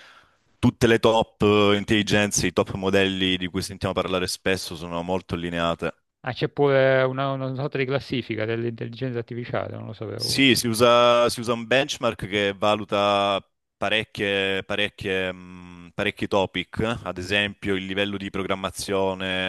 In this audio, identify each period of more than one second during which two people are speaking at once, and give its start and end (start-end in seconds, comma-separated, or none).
none